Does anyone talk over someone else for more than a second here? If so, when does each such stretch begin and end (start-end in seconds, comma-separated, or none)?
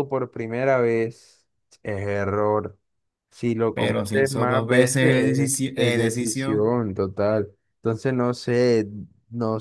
3.7-6.7